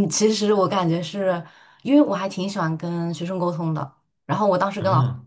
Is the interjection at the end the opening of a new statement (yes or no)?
no